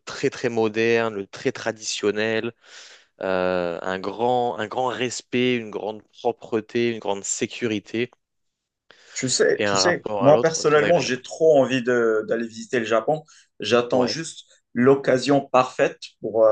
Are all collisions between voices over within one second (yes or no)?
no